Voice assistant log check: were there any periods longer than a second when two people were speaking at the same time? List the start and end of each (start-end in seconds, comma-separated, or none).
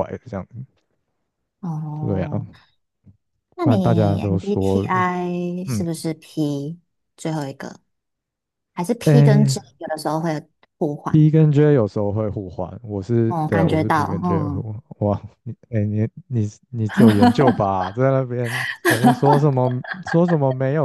3.6-4.9, 13.3-14.7